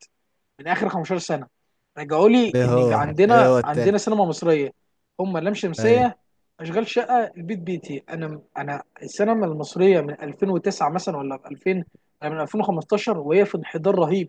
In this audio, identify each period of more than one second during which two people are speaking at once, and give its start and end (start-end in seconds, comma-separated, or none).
2.5-4.0